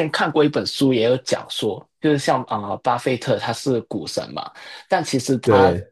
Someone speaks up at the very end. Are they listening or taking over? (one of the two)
listening